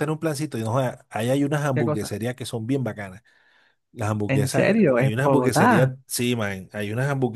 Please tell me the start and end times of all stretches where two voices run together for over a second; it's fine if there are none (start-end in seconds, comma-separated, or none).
4.3-5.9